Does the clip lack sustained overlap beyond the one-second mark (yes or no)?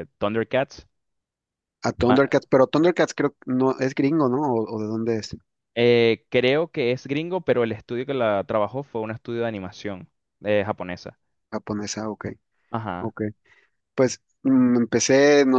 yes